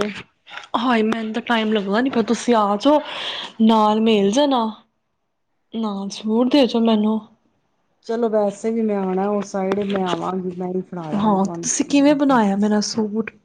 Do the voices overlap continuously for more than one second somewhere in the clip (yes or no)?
no